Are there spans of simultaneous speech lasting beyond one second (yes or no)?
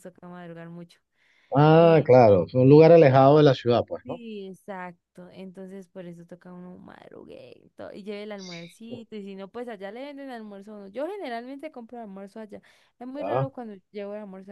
no